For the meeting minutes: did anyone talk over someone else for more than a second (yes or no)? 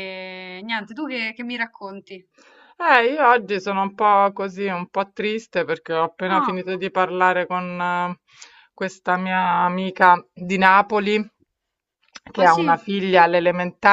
no